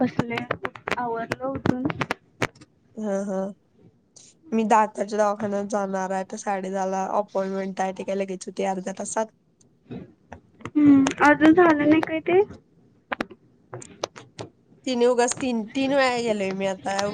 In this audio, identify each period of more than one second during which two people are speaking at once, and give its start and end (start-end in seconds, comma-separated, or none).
none